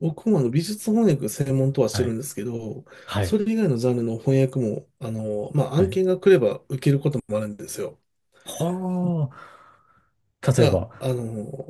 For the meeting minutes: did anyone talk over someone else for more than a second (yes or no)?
no